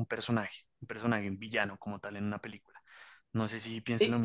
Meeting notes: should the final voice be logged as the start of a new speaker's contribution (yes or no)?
yes